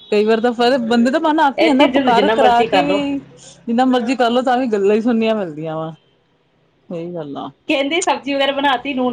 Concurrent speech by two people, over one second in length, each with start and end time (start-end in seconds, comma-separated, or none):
1.6-3.0